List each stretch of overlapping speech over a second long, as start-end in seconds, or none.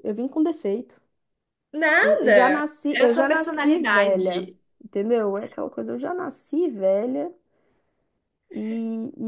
2.0-4.6